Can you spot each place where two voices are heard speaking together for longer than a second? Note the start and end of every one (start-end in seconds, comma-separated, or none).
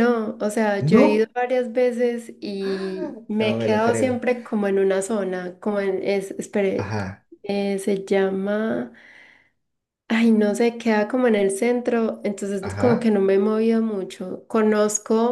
2.6-4.2